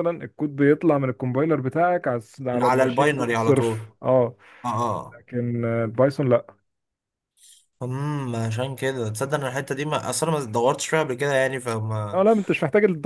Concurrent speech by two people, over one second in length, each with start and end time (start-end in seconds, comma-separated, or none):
2.5-3.9